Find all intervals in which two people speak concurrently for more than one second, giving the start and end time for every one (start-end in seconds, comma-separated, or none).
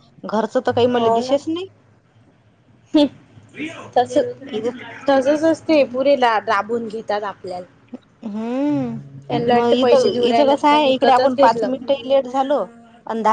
9.6-12.0